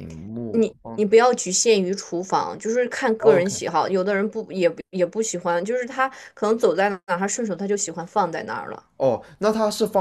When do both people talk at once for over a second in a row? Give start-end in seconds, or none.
none